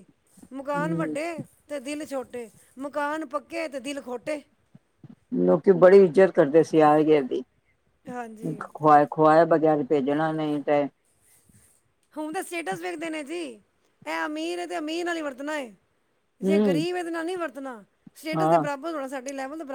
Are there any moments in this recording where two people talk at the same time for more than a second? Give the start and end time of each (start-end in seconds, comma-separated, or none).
none